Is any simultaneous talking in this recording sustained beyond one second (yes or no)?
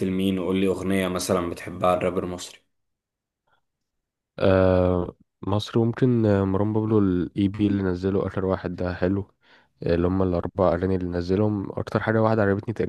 no